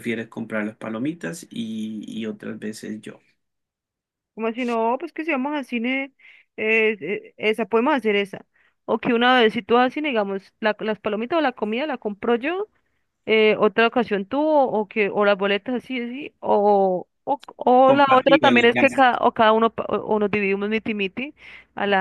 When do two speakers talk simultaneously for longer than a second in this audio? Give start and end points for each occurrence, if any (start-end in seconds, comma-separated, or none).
17.8-19.0